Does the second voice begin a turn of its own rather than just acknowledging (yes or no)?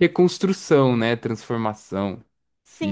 yes